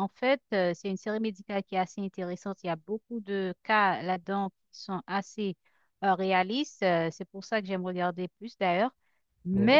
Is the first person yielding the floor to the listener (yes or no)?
no